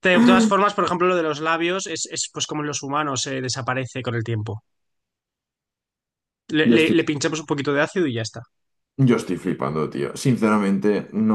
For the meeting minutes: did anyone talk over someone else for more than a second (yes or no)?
no